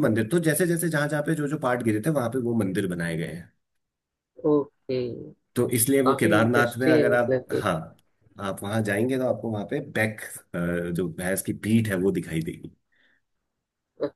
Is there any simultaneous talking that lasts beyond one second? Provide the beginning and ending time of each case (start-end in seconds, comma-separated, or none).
6.0-7.6